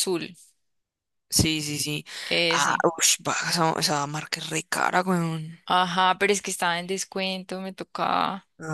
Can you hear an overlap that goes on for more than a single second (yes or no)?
no